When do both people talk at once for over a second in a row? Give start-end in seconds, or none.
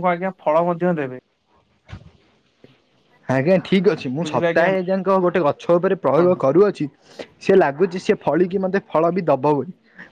none